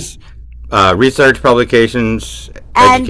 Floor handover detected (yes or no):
yes